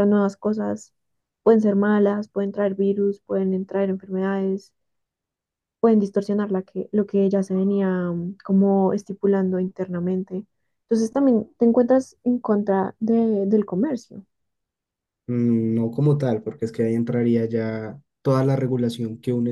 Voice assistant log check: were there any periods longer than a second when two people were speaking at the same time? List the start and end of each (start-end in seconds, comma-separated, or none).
none